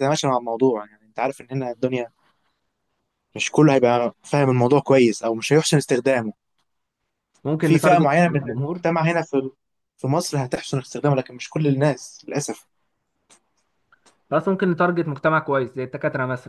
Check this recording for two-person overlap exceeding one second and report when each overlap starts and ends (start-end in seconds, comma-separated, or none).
7.6-8.9